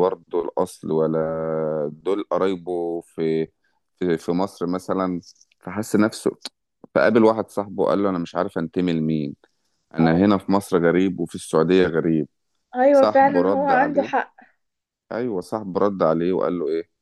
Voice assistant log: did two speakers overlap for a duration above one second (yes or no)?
yes